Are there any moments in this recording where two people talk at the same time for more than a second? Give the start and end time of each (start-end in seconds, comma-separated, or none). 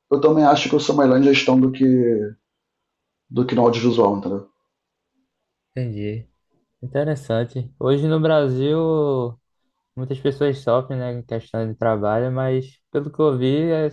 none